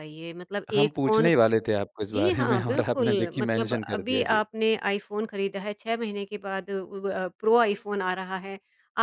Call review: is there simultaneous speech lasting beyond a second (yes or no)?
yes